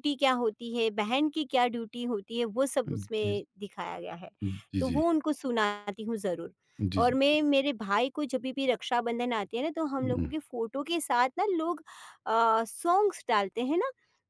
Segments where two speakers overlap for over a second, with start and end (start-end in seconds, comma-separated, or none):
none